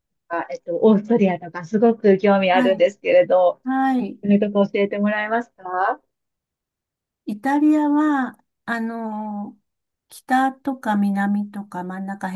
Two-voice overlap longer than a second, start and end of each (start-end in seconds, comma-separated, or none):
none